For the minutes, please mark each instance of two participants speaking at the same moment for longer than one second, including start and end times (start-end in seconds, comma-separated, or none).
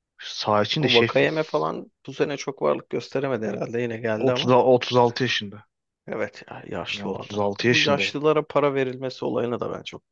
6.9-8.1